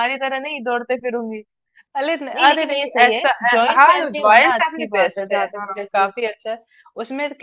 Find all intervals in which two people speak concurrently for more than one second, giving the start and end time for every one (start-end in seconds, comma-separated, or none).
2.4-6.3